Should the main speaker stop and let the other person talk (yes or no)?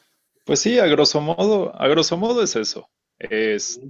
no